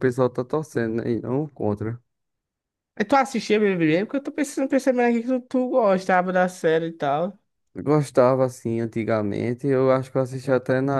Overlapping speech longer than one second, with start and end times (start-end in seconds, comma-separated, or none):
none